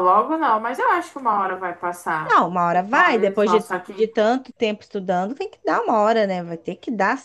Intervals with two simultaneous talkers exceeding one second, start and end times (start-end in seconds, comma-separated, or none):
2.2-4.1